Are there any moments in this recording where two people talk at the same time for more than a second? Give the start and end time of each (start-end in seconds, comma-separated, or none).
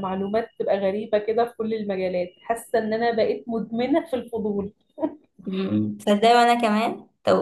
none